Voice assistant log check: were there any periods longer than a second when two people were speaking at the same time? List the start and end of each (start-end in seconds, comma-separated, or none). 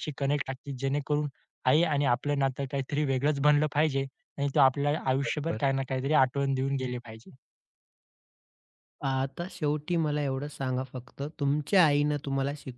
none